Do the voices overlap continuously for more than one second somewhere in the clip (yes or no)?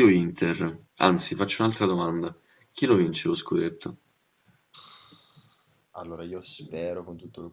no